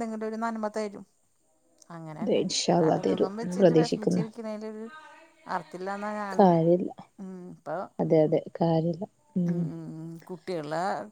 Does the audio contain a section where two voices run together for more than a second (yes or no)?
yes